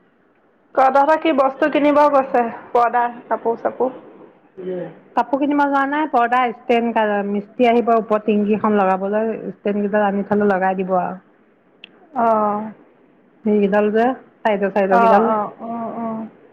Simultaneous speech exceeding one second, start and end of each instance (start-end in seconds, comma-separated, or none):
none